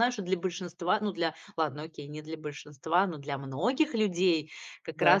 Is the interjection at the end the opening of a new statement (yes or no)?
no